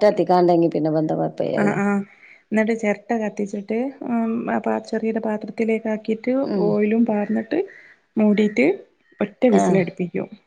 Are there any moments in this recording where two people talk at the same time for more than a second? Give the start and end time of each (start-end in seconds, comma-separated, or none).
none